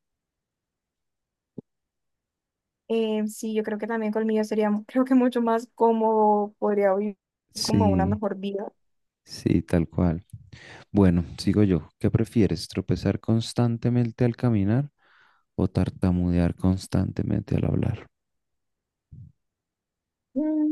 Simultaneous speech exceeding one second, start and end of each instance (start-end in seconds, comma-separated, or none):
none